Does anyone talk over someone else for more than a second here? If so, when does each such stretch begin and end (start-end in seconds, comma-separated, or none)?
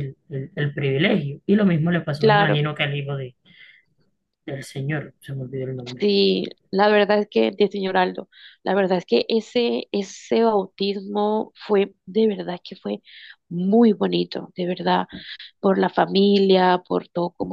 none